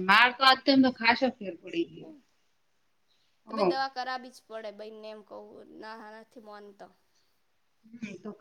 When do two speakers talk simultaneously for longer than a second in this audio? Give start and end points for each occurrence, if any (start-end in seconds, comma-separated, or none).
none